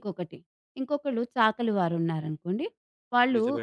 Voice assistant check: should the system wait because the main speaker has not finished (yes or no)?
yes